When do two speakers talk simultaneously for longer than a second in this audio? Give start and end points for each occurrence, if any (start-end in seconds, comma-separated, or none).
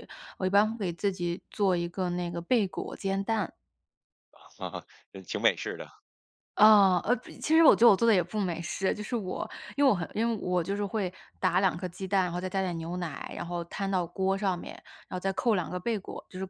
none